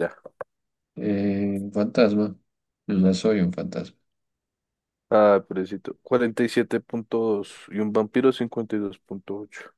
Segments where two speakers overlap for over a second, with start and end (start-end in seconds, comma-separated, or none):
none